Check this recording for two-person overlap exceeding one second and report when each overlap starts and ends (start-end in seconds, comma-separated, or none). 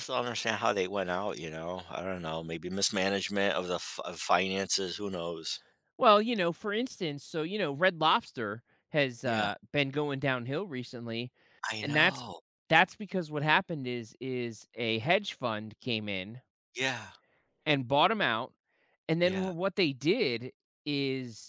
none